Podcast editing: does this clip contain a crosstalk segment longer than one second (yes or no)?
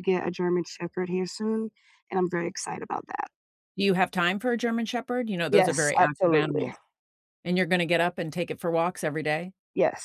yes